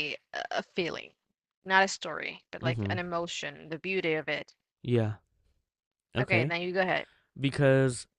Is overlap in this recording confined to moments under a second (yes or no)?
yes